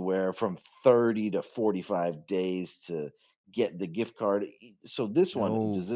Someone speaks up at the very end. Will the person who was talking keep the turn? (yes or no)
yes